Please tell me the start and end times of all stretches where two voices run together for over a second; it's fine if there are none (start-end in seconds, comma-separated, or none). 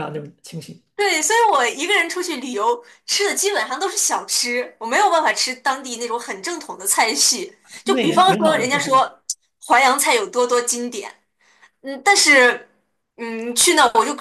7.8-9.1